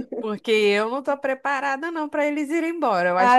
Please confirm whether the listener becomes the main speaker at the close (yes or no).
yes